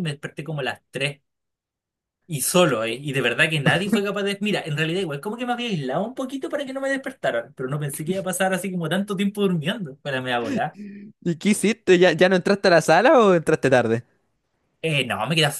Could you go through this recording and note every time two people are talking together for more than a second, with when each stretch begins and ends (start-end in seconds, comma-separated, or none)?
none